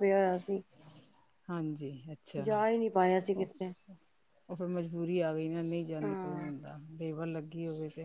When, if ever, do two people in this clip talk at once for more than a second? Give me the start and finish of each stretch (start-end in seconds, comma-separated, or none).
none